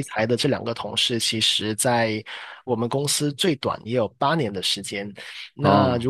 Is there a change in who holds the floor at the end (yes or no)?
no